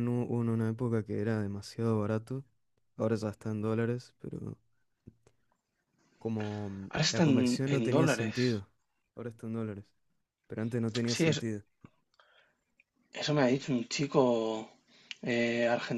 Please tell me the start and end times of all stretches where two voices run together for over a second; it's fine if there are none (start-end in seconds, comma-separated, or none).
6.9-8.4